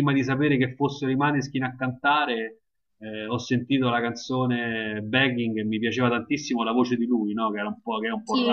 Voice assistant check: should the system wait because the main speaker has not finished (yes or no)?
no